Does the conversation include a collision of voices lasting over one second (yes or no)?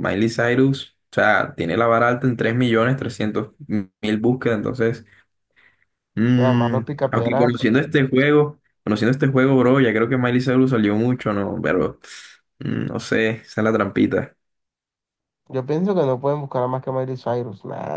yes